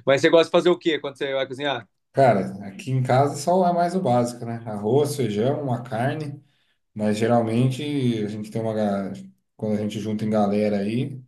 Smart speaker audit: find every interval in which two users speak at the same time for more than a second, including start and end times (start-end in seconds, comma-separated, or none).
none